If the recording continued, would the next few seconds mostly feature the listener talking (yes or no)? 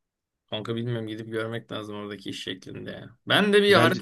no